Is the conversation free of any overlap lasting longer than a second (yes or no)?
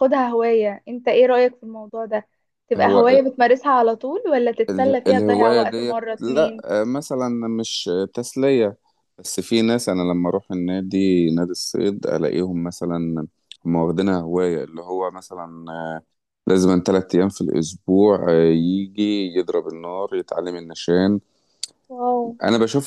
no